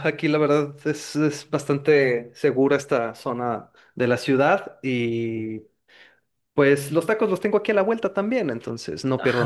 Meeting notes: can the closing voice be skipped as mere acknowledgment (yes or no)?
no